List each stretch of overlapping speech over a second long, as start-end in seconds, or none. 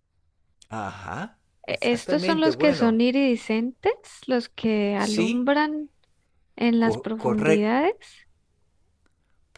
1.7-3.0